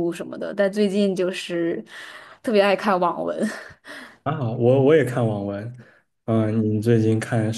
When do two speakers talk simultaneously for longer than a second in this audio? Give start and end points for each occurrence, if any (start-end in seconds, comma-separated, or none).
none